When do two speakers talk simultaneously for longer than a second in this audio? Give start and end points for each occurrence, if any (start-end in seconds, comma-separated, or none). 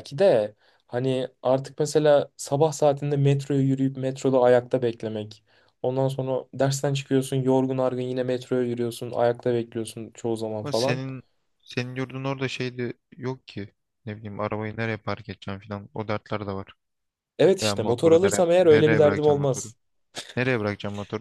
17.6-19.7